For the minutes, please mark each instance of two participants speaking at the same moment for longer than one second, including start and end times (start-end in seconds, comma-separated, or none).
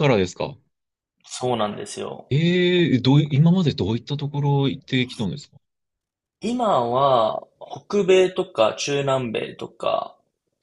none